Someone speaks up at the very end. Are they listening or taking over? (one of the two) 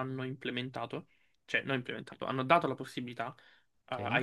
listening